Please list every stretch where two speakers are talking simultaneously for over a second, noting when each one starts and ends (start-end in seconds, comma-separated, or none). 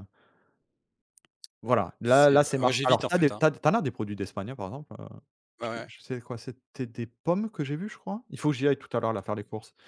2.0-3.4